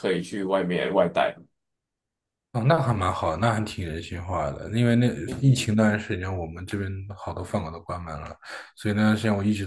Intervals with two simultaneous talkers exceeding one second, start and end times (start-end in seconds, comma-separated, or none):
none